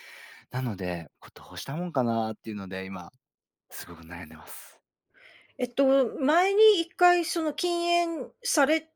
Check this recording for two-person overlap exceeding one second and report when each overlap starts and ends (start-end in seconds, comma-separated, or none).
none